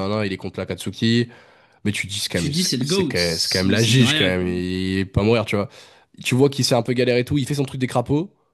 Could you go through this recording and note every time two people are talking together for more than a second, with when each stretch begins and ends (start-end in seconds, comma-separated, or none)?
2.3-4.5